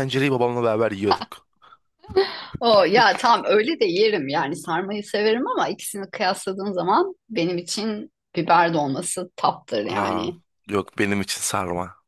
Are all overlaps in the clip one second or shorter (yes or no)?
yes